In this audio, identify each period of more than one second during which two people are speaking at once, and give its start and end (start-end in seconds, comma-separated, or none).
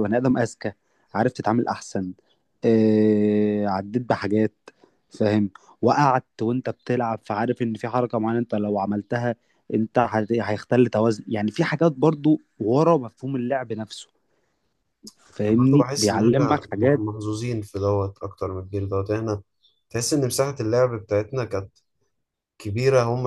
15.4-17.0